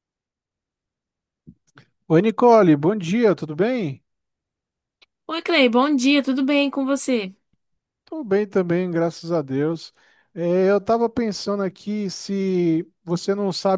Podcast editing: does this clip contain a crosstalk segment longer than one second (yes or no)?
no